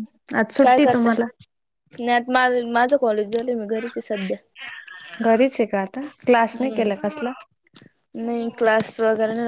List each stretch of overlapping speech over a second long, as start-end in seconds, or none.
none